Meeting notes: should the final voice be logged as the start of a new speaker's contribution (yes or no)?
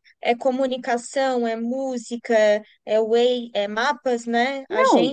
yes